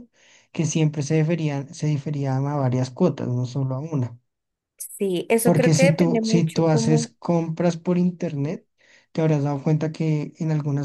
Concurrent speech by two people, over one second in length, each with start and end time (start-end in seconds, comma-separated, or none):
5.4-7.1